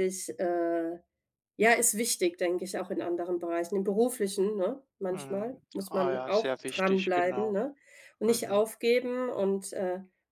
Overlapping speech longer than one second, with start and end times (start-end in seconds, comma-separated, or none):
5.1-7.6